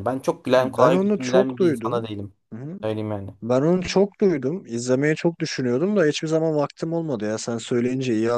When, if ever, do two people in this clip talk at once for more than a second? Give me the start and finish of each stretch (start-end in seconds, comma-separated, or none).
0.6-2.1